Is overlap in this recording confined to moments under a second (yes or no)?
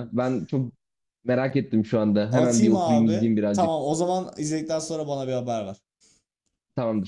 no